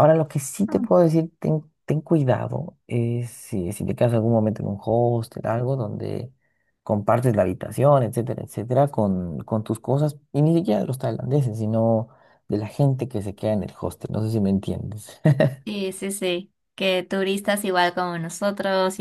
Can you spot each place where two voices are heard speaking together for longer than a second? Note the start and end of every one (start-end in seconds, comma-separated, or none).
none